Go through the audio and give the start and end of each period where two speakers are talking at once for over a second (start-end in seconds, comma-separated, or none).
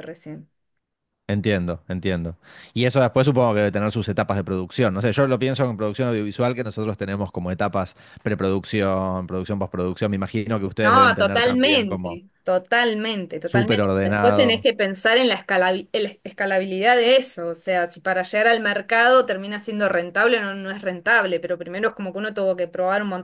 10.8-12.2, 13.4-14.7